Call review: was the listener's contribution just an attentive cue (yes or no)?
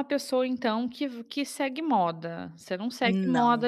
yes